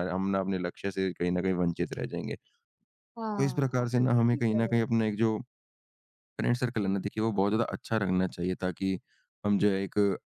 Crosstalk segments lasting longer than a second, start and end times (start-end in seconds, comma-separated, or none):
3.4-4.9